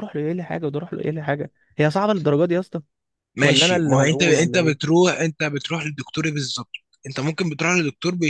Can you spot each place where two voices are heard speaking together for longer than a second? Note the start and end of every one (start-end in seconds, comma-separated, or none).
3.4-4.9